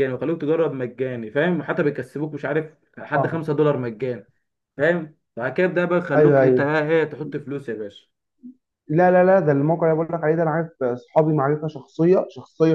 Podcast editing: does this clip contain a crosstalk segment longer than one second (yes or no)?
no